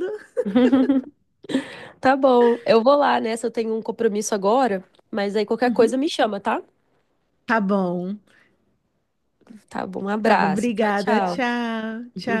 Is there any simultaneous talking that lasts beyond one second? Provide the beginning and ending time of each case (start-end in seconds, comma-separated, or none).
10.2-11.5